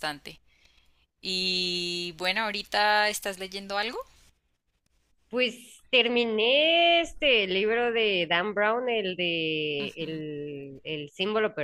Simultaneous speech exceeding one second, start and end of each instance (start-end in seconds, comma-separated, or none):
none